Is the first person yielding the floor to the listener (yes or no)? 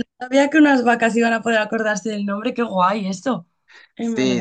yes